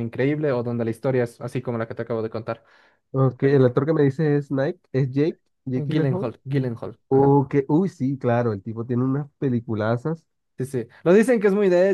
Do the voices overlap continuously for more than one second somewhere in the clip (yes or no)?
no